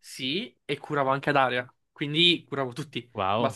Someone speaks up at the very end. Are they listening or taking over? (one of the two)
listening